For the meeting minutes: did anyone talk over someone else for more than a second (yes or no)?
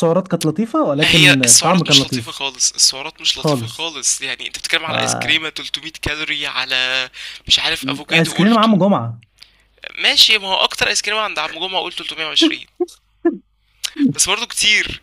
yes